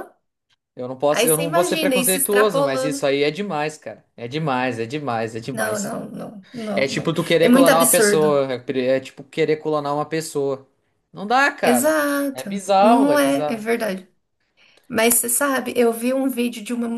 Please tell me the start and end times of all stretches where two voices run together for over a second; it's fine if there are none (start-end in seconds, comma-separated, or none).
1.1-3.0, 6.8-8.4, 11.6-13.7